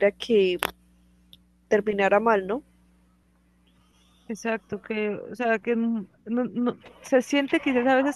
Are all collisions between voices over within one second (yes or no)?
yes